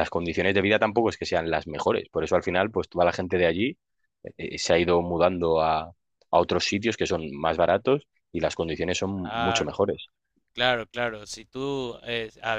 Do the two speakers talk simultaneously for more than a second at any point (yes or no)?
no